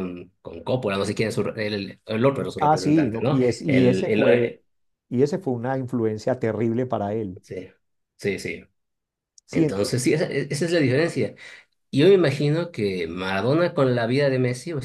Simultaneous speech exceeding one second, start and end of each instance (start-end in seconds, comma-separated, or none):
2.6-4.6